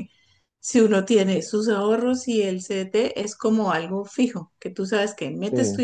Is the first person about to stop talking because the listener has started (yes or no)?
no